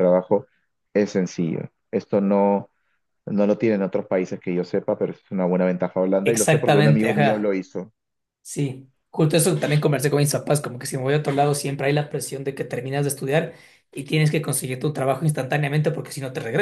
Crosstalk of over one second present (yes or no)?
yes